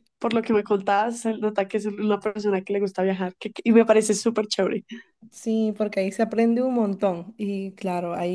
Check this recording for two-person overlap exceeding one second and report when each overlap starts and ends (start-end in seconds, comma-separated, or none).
none